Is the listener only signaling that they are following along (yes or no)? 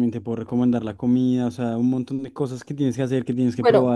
no